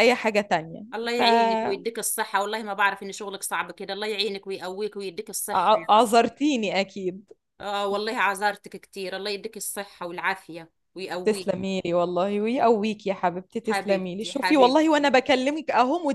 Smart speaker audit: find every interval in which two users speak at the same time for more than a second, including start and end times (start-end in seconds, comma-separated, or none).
13.6-15.1